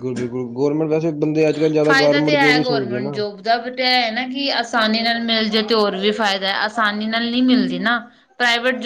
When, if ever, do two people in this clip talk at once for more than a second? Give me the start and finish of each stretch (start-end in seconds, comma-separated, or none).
1.8-3.2